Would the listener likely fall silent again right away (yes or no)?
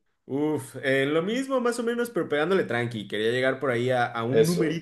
yes